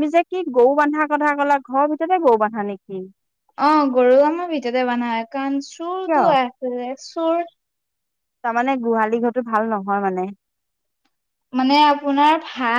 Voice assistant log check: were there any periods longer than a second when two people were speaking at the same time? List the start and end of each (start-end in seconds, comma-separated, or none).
none